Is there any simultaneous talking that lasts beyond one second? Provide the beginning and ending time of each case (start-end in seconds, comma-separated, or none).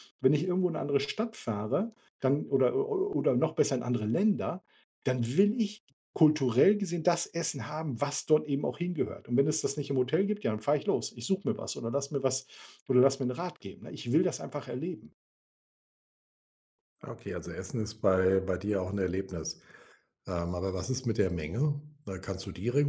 none